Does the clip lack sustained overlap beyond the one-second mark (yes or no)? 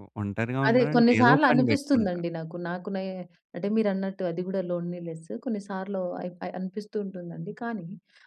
no